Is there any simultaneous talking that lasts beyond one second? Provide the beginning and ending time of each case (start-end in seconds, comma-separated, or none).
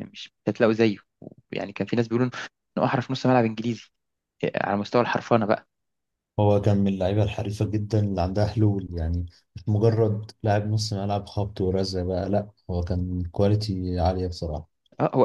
none